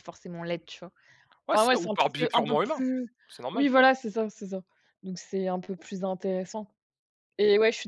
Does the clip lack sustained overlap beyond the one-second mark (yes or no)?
no